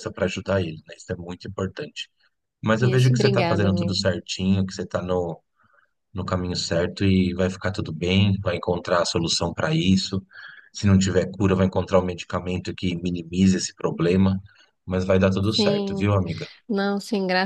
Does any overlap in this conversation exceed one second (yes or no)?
yes